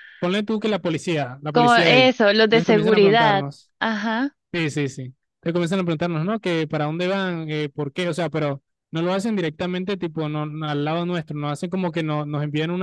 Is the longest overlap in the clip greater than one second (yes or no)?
yes